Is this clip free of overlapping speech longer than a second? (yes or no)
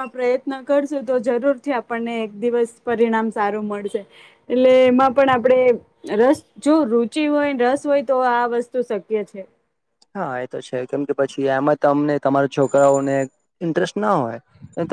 yes